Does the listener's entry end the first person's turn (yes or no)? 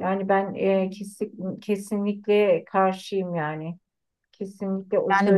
no